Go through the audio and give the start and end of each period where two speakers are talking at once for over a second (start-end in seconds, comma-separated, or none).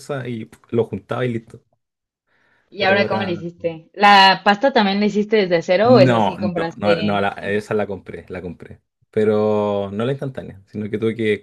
5.8-7.3